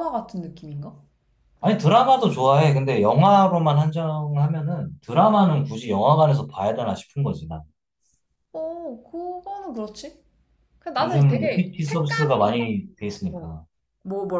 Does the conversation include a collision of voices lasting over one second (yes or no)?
yes